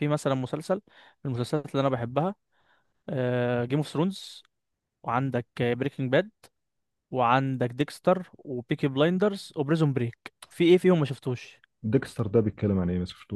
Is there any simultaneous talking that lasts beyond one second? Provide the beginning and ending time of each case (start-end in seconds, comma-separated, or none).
none